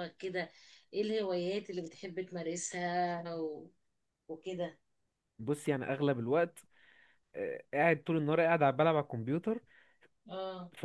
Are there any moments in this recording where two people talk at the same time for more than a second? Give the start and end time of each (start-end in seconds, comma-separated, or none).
none